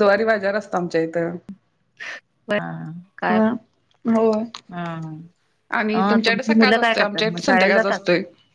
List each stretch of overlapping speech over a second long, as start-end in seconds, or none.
5.9-8.0